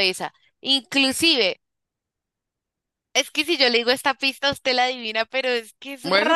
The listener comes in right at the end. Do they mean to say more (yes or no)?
yes